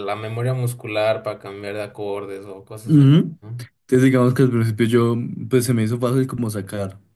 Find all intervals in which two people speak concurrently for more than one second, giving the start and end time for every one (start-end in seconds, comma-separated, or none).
none